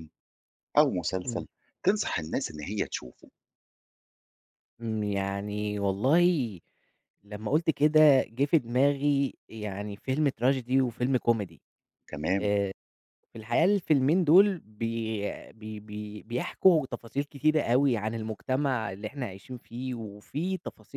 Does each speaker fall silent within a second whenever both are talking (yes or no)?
yes